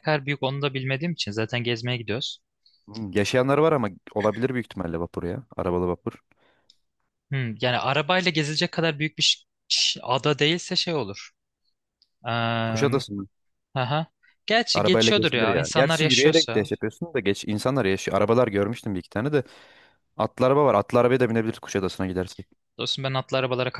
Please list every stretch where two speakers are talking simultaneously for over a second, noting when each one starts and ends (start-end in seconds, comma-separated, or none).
14.7-16.7